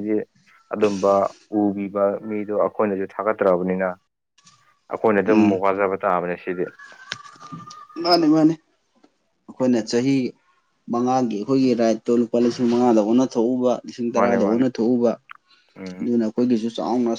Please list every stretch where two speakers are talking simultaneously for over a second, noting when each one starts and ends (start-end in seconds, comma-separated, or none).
none